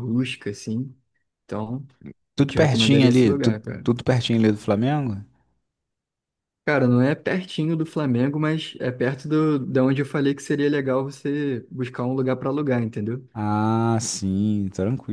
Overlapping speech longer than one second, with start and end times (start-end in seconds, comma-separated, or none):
2.4-3.9